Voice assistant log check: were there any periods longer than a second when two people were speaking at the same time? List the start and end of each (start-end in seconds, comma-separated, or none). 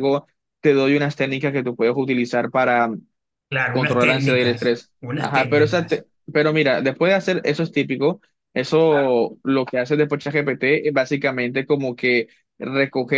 3.7-6.1